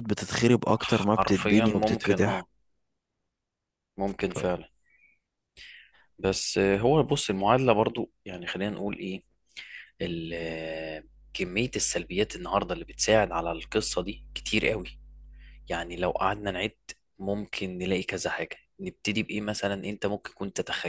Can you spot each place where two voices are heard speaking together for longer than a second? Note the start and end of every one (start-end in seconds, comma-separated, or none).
1.1-2.4